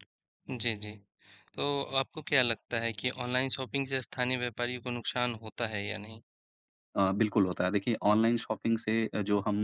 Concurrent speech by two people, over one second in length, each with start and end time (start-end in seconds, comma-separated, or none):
none